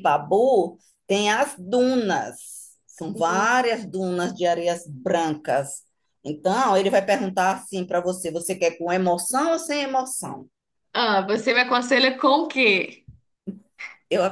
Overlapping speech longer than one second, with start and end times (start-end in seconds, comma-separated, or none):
none